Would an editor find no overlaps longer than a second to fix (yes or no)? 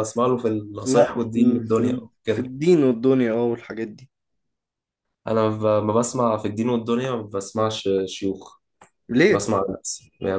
no